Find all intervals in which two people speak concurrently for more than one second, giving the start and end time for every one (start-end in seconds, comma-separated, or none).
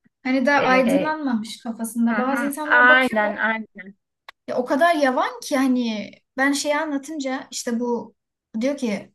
2.1-3.3